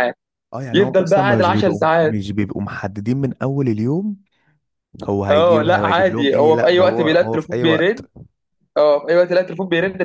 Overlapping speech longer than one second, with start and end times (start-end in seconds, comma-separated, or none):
0.7-2.2, 5.3-8.1